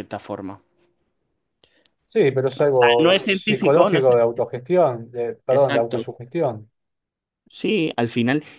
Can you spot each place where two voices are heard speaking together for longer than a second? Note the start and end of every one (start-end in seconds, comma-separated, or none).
3.0-4.2